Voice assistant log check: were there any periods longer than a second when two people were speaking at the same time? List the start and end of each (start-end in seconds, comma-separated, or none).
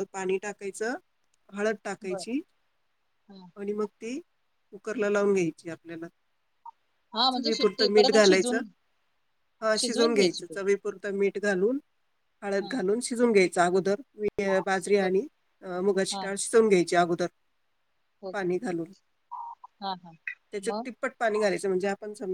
7.3-8.6